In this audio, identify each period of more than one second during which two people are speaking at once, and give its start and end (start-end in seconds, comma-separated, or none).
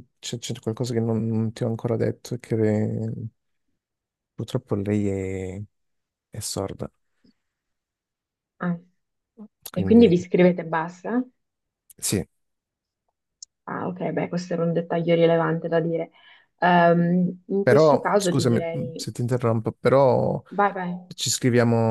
17.6-19.1